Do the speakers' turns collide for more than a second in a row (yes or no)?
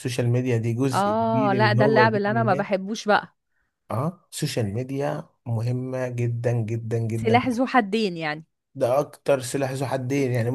yes